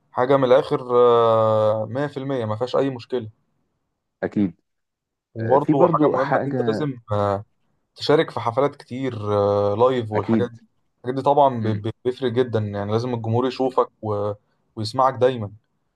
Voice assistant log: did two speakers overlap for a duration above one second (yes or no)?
yes